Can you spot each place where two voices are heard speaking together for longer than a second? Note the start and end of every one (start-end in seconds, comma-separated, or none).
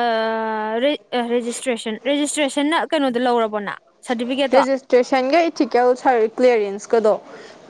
none